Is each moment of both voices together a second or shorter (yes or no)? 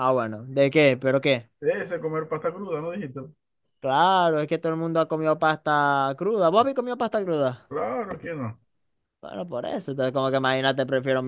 yes